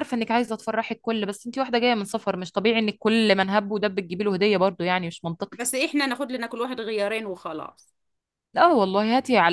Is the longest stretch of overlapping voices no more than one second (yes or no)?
yes